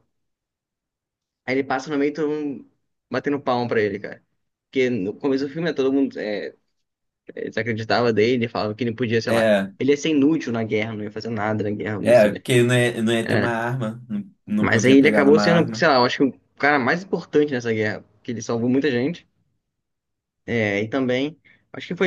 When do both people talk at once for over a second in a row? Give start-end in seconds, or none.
14.6-15.9